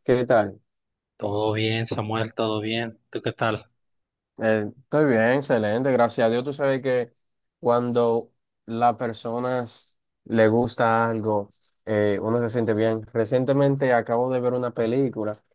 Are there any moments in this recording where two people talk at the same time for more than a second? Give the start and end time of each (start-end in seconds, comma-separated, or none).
none